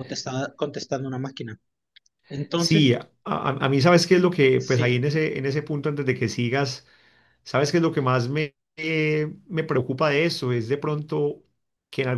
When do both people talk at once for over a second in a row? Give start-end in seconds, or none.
none